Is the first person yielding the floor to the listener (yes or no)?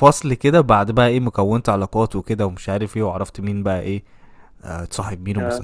no